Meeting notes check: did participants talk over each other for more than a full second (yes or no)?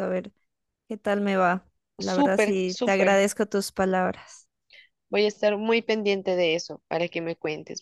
yes